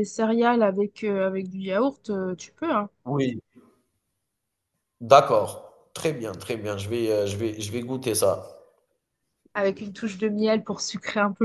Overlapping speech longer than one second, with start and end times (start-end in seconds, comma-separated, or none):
none